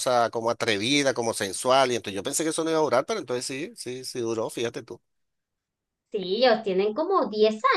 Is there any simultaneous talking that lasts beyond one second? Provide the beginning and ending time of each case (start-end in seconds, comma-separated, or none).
none